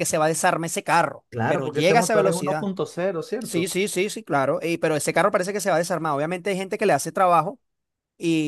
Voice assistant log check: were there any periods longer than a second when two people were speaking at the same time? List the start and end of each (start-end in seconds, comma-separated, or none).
1.3-2.7